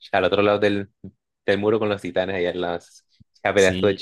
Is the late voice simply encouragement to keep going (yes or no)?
no